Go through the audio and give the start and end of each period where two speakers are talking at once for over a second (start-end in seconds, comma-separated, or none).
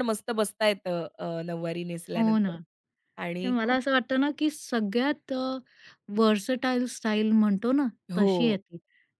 none